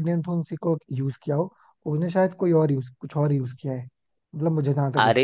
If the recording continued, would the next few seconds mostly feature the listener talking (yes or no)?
yes